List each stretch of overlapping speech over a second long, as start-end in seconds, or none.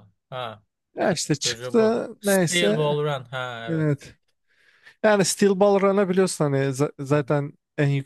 1.4-3.0